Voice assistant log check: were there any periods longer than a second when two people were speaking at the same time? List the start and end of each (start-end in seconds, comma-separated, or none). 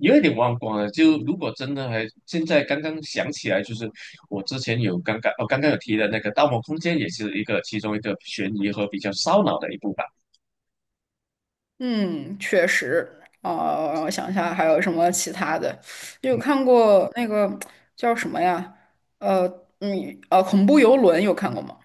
none